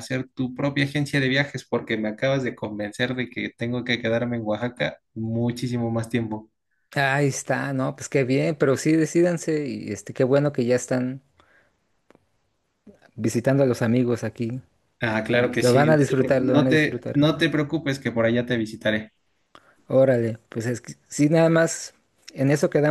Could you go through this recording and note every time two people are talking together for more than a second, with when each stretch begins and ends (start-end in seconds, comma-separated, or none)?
15.3-17.2